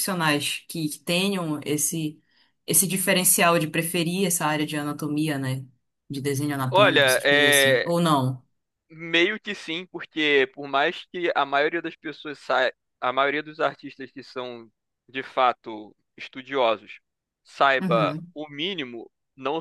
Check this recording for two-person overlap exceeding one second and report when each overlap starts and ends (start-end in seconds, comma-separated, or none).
6.7-7.9